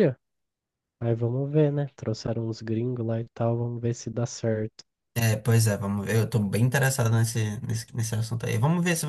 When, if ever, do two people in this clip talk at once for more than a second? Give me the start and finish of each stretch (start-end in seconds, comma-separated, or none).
none